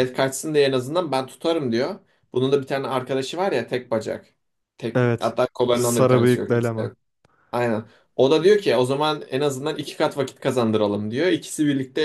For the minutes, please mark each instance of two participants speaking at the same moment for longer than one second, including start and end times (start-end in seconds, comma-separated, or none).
5.0-6.5